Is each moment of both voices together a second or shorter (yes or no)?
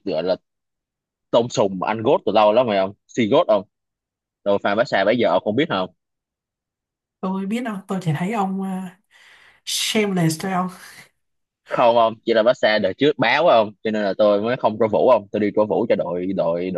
yes